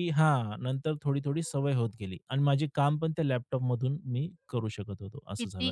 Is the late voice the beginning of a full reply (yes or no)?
yes